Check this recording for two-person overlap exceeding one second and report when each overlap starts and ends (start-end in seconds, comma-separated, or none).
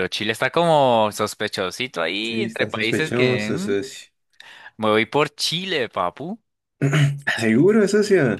2.2-3.8